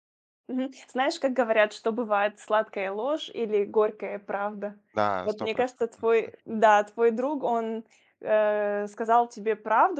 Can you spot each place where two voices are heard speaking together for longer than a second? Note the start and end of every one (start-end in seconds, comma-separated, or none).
5.2-6.6